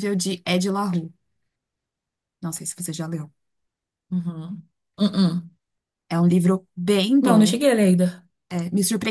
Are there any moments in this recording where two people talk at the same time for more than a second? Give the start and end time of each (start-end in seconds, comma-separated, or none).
none